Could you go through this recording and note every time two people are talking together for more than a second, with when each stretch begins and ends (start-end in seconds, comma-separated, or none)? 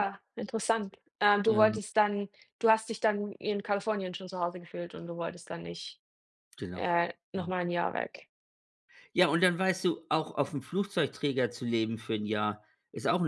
none